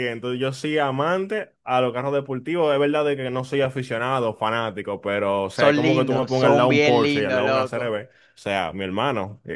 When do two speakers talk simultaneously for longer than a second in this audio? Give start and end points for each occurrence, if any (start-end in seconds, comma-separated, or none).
5.5-8.0